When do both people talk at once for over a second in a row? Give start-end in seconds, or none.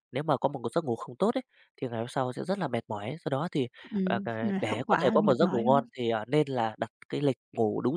4.0-5.9